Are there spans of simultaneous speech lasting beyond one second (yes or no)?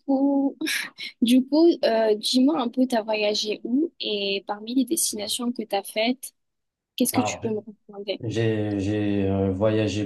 no